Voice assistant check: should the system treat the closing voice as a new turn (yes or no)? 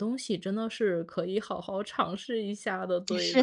yes